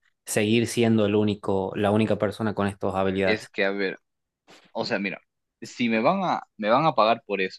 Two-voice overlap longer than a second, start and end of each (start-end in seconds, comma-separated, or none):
none